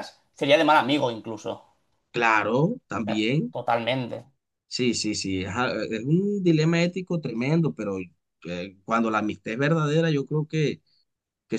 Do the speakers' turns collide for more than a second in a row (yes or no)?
no